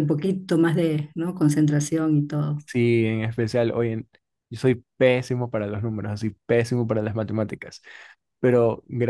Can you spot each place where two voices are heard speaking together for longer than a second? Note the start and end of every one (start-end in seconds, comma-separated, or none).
none